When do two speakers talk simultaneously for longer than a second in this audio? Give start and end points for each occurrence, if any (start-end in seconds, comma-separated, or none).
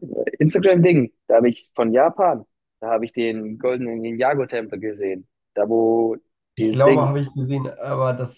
none